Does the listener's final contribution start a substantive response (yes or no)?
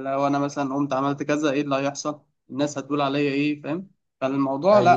yes